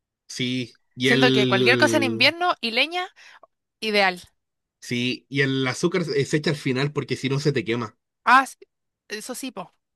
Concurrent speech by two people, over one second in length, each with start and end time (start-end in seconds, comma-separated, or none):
1.0-2.3